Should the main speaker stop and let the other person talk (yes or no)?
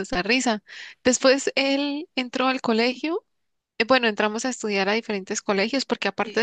no